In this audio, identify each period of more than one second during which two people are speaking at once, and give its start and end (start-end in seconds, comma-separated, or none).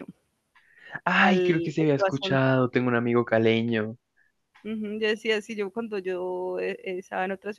1.1-2.4